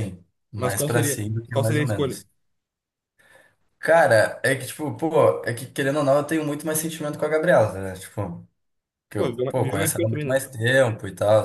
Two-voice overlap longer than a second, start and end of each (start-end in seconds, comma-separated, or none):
0.5-2.2, 9.2-10.4